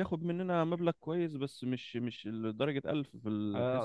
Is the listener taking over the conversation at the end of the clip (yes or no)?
yes